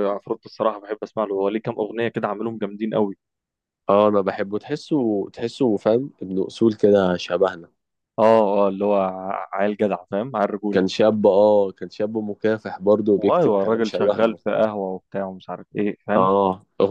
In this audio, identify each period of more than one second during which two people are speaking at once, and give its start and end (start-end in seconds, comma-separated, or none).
13.2-14.7